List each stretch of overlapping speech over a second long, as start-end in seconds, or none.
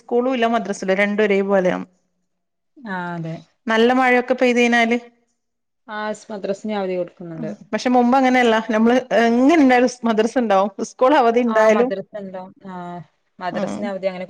none